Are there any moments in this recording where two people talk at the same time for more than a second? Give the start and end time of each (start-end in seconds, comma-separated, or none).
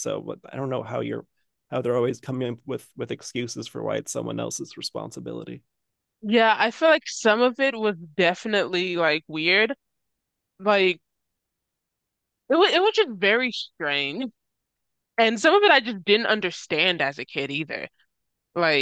none